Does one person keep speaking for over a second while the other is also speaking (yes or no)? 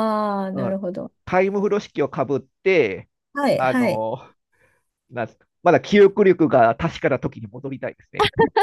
no